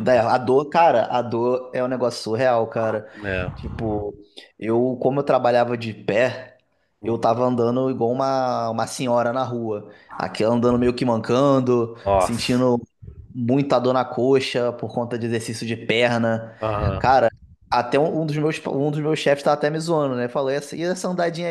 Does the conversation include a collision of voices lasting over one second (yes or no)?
no